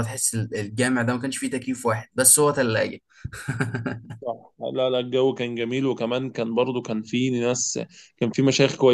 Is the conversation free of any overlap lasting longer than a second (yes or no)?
yes